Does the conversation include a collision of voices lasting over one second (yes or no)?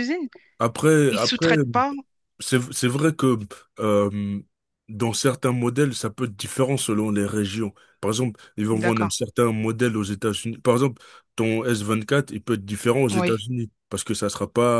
no